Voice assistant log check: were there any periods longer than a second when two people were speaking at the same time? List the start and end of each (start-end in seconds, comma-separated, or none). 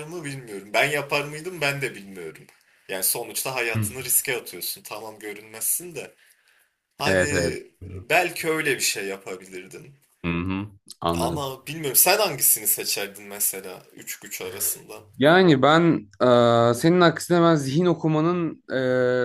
none